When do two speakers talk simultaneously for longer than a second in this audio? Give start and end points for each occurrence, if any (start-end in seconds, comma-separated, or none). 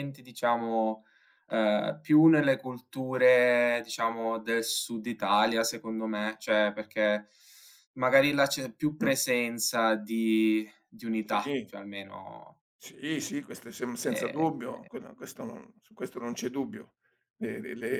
none